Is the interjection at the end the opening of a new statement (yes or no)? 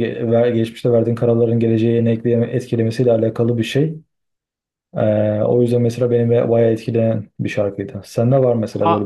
yes